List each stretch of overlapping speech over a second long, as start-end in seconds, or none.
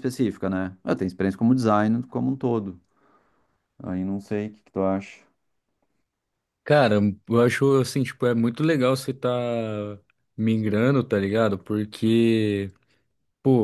none